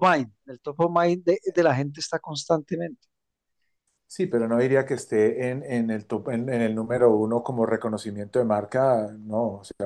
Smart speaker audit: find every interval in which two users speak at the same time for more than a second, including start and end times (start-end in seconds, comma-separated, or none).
none